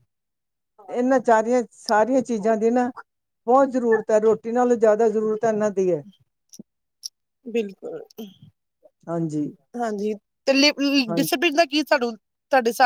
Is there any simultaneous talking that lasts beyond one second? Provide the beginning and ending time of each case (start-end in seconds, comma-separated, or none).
none